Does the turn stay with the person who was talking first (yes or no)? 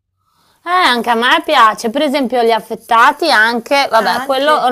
yes